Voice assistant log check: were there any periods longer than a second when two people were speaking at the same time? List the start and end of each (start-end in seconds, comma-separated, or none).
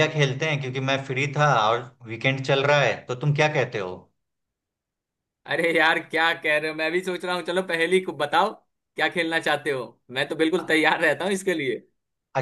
none